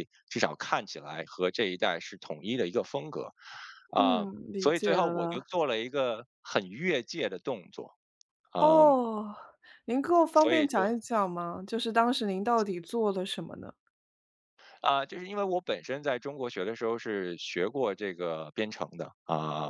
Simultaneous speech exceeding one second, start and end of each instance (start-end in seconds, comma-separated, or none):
4.0-5.5